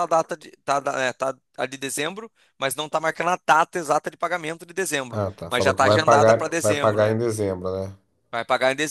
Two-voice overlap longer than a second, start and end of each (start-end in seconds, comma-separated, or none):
5.1-7.2